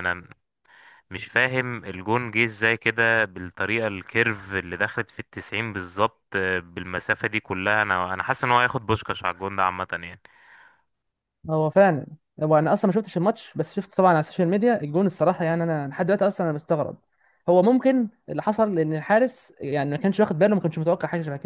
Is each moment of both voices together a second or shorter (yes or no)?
yes